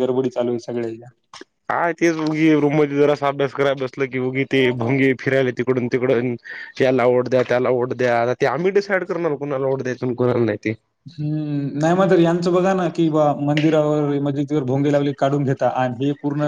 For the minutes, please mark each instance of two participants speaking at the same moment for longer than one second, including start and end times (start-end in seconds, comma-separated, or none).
none